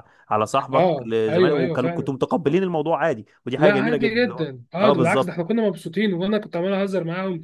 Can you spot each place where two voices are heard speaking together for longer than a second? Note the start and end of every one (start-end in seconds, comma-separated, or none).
0.7-2.1, 3.6-5.4